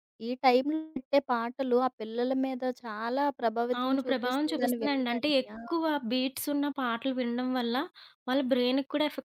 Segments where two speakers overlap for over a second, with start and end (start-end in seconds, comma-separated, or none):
3.8-5.6